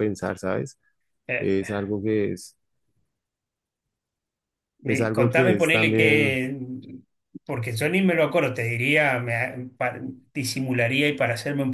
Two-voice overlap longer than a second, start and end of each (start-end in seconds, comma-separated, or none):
4.8-6.4